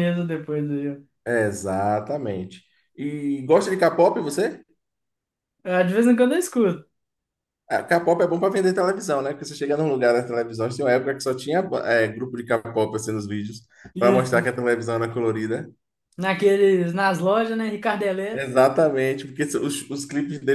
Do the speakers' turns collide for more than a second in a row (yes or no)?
no